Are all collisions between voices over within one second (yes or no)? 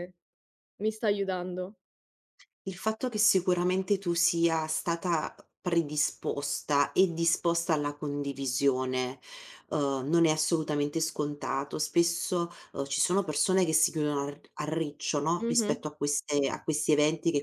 yes